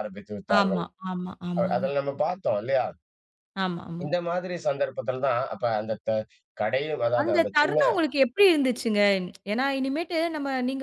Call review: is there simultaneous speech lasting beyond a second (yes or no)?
no